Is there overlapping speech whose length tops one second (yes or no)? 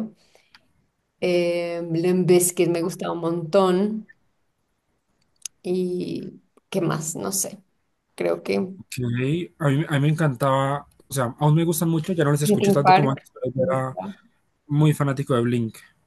yes